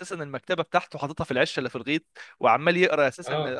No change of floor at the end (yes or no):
yes